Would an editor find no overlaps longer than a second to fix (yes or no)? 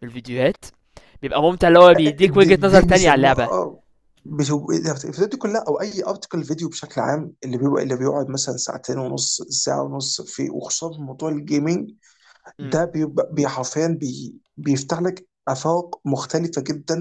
no